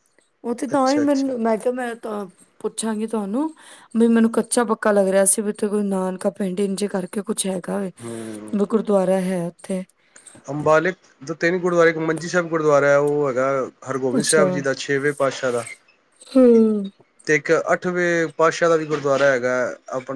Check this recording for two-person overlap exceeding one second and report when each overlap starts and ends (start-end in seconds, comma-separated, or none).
none